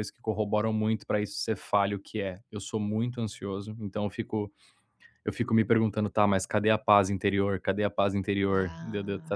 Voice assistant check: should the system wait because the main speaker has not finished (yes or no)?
yes